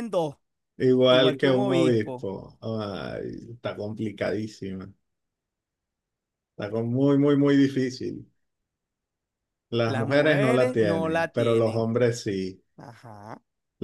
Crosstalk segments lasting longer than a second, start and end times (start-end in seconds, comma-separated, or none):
1.1-2.3, 9.8-11.8